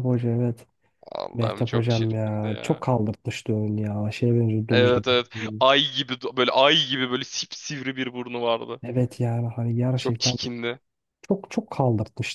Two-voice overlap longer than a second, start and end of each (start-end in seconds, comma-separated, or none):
1.3-2.8